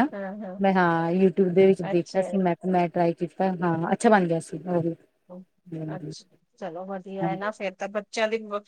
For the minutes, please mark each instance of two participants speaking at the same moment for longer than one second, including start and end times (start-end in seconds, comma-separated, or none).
none